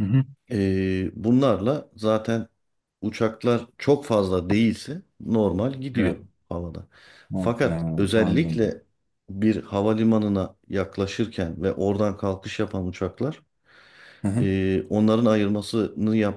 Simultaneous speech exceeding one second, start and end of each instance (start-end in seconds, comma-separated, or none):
7.3-8.8